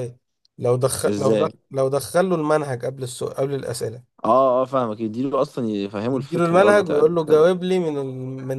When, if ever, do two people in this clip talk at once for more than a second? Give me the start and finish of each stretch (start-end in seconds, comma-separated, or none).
6.1-7.5